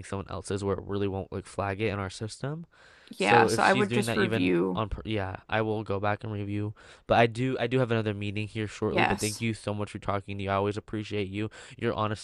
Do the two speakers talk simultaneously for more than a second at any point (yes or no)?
yes